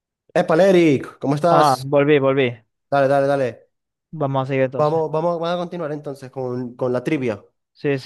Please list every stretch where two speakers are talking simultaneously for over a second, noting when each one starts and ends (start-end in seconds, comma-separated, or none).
none